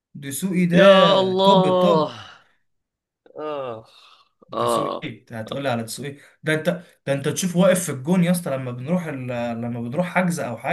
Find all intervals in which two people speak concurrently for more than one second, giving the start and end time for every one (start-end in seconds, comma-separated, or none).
0.7-2.1